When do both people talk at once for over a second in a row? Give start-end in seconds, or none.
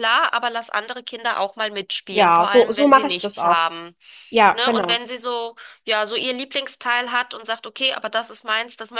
2.1-3.6